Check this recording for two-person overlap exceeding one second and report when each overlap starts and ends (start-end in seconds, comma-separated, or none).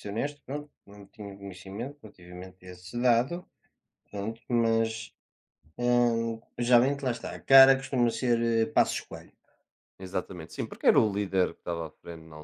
none